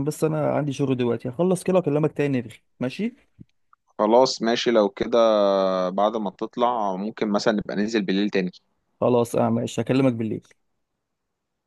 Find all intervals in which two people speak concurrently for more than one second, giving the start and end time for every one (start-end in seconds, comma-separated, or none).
none